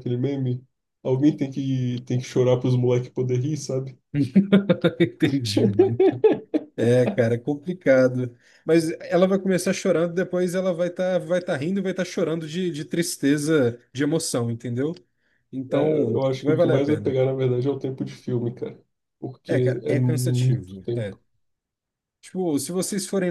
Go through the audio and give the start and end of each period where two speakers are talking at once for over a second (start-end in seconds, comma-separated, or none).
15.7-17.2, 19.4-21.2